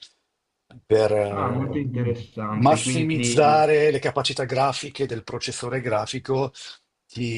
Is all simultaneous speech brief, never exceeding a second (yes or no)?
no